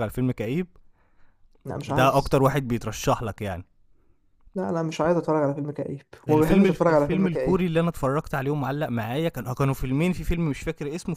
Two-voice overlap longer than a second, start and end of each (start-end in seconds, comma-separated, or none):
6.3-7.6